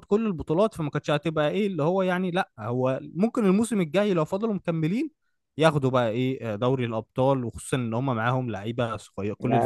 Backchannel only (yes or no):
no